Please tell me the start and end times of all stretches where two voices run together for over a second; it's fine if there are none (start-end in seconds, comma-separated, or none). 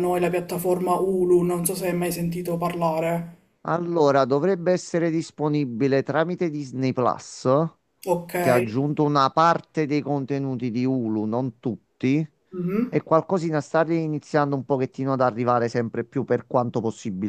none